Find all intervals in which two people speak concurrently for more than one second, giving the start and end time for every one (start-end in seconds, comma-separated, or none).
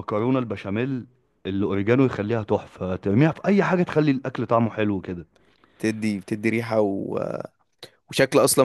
none